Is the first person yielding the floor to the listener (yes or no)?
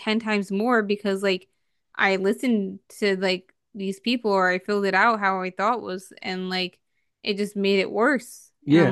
yes